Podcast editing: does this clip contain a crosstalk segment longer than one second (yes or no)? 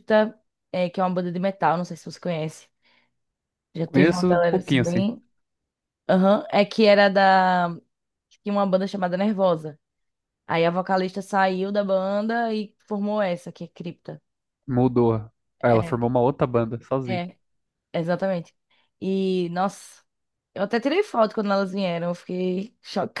yes